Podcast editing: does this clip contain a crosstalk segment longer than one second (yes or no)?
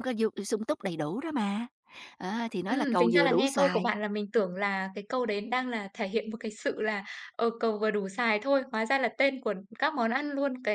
yes